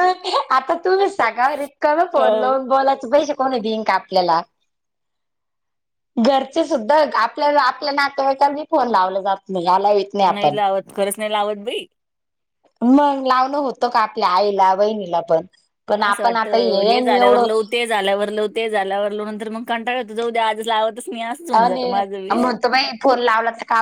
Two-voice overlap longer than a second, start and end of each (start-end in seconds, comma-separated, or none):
16.0-17.4